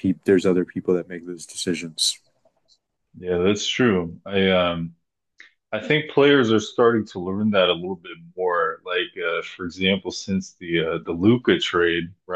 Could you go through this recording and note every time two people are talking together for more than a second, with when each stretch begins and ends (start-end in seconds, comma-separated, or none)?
none